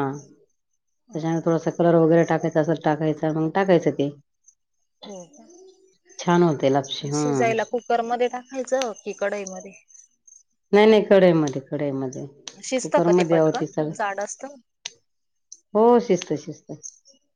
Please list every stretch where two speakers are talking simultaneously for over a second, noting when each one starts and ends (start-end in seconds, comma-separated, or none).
12.6-13.9